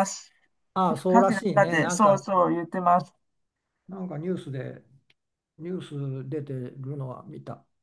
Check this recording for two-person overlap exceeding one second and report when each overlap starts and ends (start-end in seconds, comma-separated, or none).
0.9-2.2